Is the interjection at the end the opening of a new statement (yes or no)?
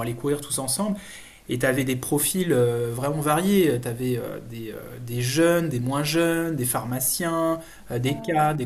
no